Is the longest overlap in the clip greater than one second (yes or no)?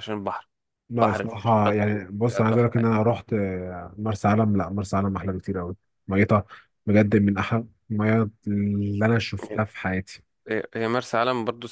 yes